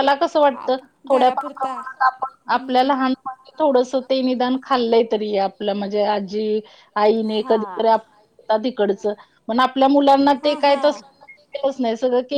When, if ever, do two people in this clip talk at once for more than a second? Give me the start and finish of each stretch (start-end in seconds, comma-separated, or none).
0.6-2.9